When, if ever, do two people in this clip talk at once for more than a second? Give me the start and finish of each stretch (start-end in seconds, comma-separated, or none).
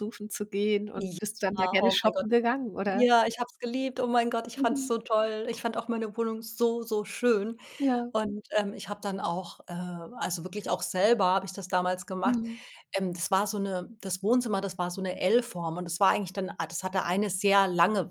1.0-2.2